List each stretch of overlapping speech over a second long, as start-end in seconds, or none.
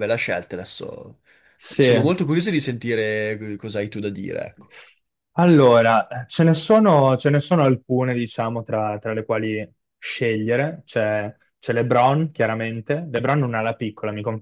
none